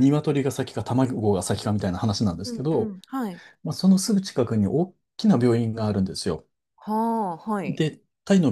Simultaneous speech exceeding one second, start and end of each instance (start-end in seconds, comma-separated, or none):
none